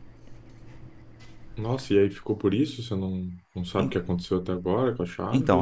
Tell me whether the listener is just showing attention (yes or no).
no